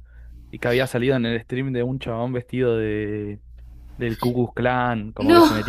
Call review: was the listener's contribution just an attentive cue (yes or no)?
yes